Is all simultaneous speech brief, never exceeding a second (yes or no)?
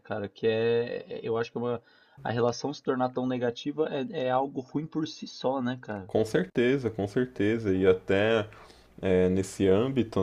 yes